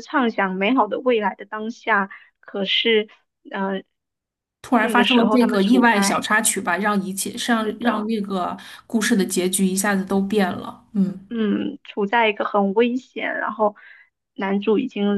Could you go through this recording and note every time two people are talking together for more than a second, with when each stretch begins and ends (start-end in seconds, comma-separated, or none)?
4.8-6.3